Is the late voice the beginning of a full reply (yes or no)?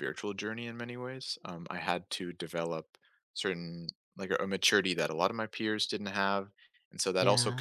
no